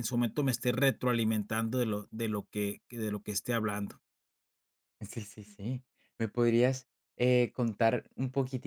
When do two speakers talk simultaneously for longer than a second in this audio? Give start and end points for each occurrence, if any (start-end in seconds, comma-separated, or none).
none